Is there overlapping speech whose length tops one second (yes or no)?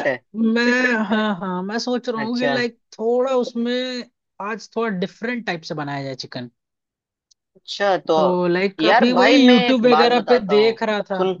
yes